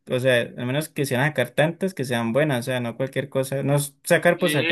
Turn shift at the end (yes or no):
yes